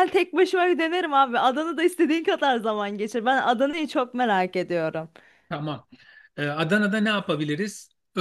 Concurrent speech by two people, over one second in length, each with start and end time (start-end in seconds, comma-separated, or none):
none